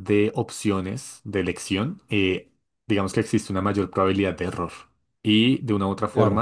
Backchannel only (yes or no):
yes